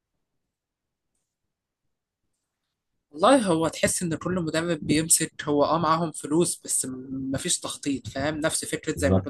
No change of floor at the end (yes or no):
yes